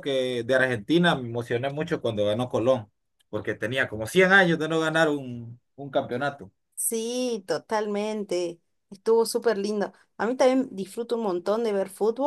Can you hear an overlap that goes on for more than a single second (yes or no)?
no